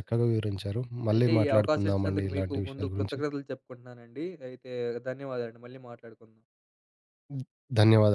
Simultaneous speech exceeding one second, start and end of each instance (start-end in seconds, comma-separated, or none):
1.1-3.2